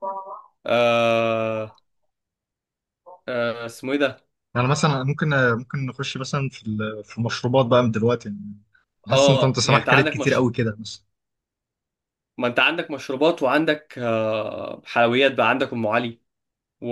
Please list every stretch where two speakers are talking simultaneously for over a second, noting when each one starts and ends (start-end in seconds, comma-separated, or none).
9.1-10.4